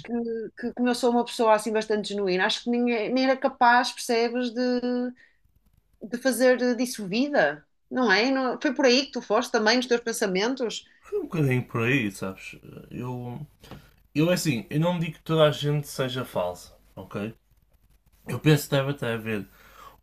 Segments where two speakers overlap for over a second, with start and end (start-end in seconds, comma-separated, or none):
none